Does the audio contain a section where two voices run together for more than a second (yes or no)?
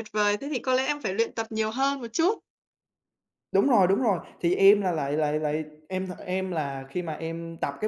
no